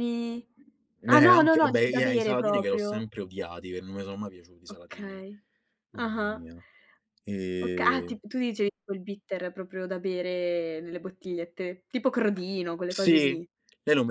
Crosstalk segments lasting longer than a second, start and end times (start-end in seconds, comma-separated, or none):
1.1-2.9